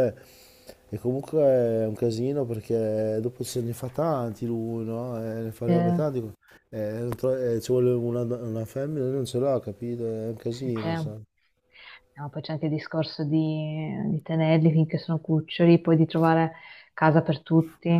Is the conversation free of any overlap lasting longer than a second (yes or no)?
yes